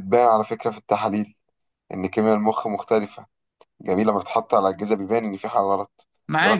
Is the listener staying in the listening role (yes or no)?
no